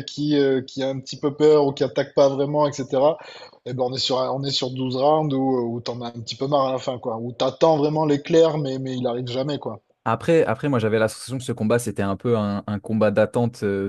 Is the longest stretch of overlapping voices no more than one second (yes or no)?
yes